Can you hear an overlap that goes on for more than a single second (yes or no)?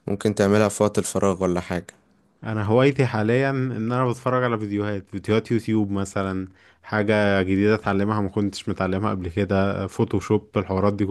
no